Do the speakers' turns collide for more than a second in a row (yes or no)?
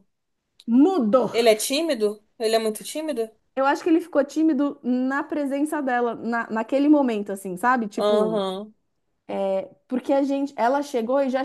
no